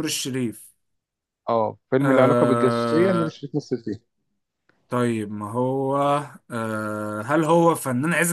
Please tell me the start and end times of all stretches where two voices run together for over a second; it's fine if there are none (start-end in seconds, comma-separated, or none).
2.0-3.4